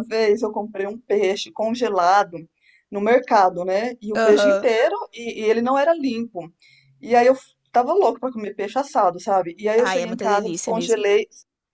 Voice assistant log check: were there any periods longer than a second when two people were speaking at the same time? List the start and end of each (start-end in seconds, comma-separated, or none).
9.8-11.0